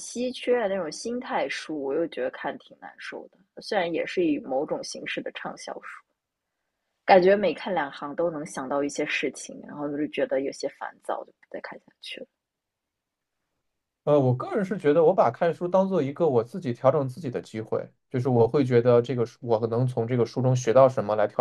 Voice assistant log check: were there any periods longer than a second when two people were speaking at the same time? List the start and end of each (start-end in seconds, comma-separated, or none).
none